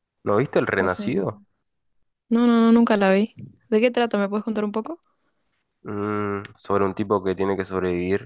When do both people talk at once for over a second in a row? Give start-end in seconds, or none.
none